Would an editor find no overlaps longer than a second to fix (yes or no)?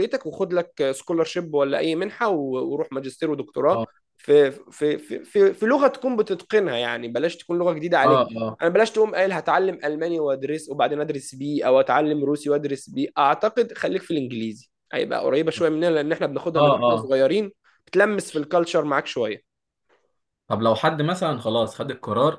yes